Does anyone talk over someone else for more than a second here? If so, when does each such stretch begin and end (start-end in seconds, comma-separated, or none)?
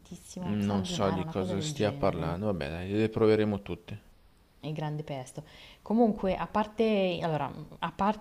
0.7-2.3